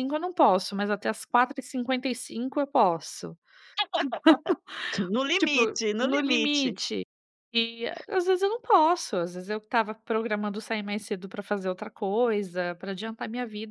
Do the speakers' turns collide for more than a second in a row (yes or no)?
yes